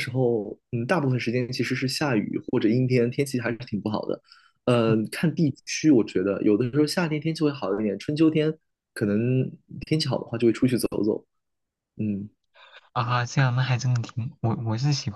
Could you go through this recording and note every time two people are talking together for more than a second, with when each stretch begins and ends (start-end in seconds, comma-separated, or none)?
none